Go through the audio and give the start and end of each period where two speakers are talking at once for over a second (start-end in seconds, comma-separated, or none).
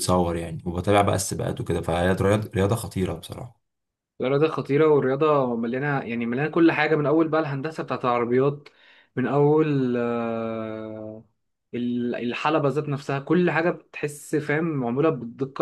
none